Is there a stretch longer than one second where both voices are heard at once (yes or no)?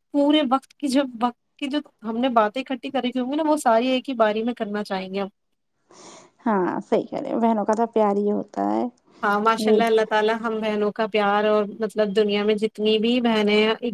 no